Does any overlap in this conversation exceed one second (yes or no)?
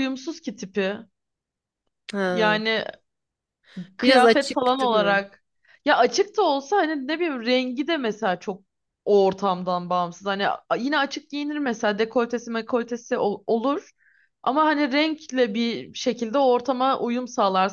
yes